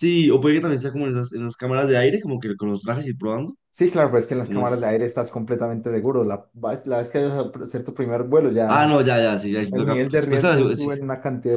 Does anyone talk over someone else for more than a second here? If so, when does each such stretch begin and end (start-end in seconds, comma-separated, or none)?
9.7-10.9